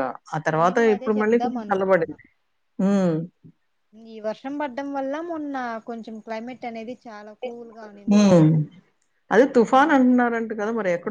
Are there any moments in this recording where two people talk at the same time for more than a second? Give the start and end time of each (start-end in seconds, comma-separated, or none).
0.6-2.1